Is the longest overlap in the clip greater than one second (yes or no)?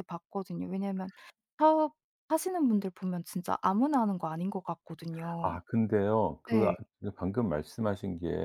no